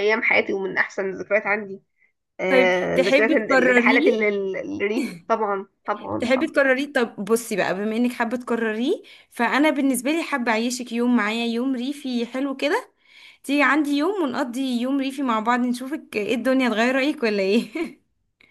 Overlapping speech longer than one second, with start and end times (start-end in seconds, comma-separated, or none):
2.5-4.1